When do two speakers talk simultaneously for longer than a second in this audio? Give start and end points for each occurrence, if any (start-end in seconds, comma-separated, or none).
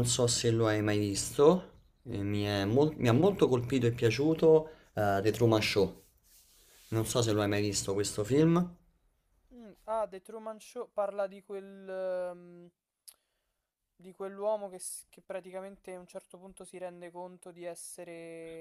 none